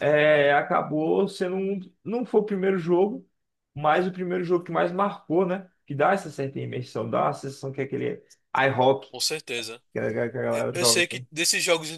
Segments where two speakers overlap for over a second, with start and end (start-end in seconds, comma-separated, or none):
none